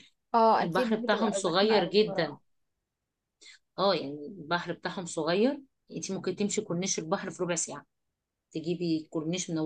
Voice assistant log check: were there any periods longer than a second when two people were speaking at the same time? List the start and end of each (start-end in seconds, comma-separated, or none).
0.6-2.4